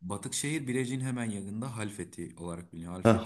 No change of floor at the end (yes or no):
no